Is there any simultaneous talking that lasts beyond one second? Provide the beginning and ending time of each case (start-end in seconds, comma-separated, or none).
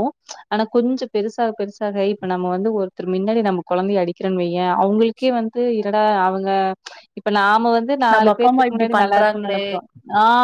8.1-9.6